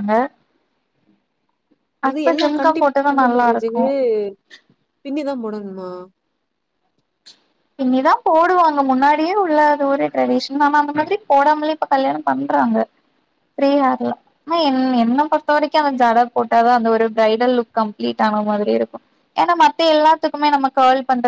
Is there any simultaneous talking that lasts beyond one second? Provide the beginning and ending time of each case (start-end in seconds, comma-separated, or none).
none